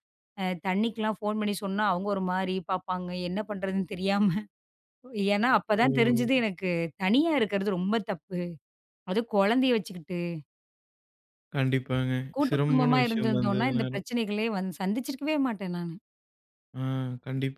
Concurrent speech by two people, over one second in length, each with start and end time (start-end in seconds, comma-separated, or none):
12.4-14.1